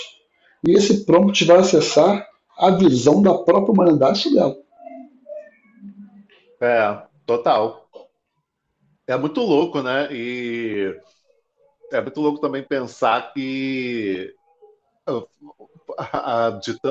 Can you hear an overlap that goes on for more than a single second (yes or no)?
no